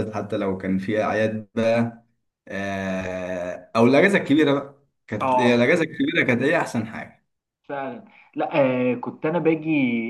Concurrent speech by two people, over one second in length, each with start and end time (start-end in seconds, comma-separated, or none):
none